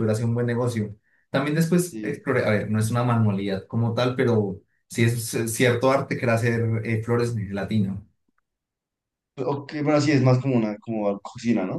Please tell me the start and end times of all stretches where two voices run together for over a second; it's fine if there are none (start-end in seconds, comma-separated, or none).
none